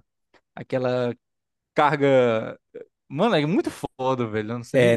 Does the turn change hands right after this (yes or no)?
yes